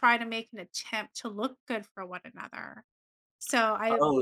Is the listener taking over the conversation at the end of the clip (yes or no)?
yes